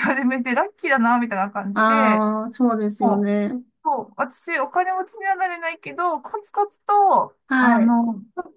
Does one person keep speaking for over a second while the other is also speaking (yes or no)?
no